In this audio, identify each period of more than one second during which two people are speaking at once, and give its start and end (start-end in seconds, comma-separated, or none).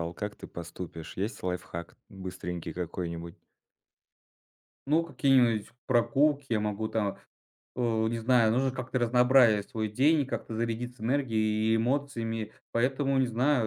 none